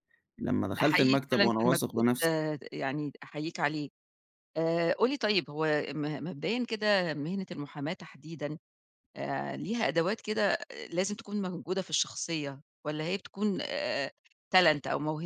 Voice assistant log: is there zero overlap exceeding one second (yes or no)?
no